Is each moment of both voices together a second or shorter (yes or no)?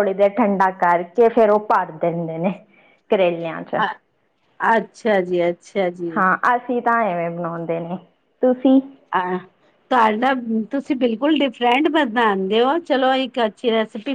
yes